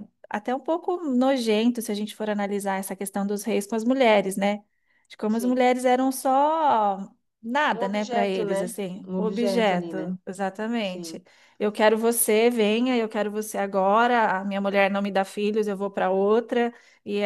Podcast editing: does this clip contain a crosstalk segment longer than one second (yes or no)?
yes